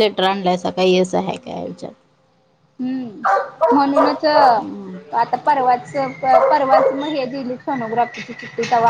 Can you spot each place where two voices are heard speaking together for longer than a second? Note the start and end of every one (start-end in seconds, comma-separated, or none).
none